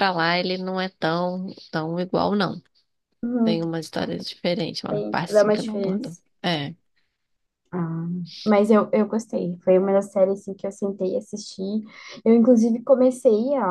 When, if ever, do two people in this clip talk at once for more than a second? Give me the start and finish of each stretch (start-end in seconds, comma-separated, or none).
4.9-6.2